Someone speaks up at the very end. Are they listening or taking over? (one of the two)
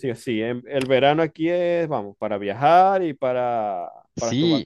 taking over